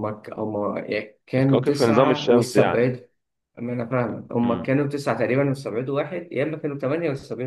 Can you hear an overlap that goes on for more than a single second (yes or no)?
yes